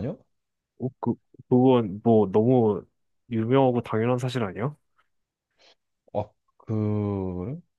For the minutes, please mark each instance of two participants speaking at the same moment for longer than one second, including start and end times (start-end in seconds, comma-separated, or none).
none